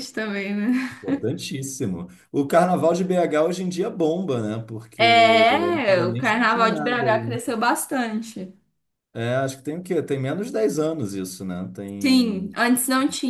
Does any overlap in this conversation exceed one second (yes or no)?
yes